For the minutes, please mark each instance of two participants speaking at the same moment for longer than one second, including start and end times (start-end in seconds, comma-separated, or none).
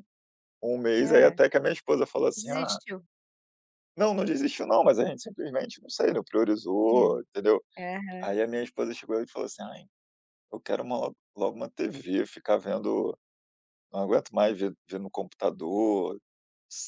none